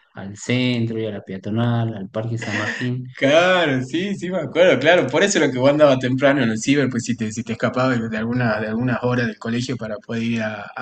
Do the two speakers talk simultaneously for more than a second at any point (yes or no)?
no